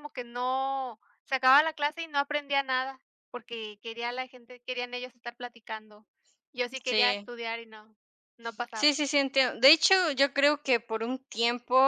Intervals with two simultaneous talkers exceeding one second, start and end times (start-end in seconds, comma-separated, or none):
none